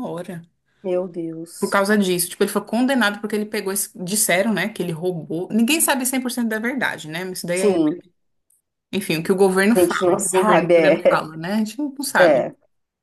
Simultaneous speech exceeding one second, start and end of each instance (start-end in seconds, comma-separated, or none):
9.7-11.2